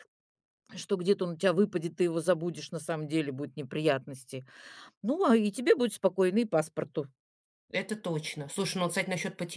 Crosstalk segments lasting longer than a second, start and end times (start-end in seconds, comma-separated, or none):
none